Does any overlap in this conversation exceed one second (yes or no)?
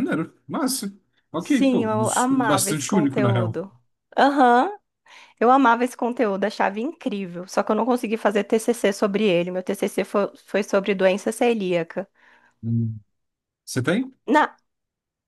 yes